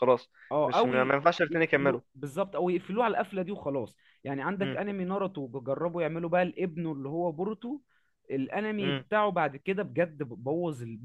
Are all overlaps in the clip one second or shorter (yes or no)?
no